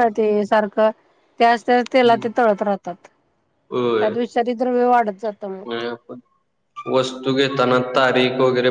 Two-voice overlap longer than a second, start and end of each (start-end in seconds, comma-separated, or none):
none